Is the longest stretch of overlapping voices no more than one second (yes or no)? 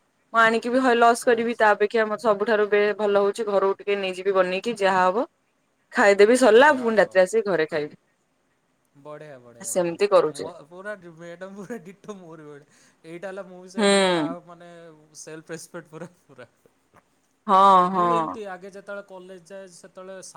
yes